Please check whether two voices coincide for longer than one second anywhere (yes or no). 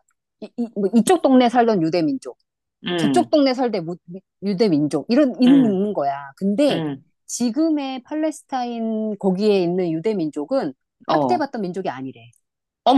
no